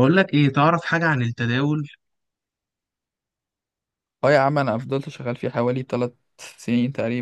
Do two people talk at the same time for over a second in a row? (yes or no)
no